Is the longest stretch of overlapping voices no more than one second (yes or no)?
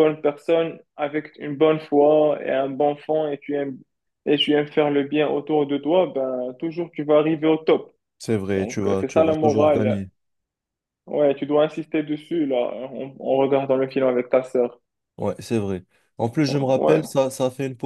no